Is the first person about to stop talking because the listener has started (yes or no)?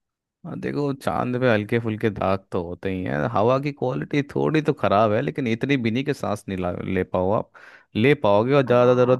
no